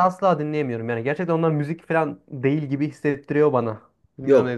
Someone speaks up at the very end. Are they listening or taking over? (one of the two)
taking over